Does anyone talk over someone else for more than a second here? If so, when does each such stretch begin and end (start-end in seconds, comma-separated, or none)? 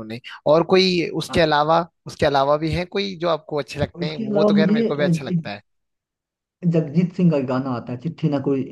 4.0-5.4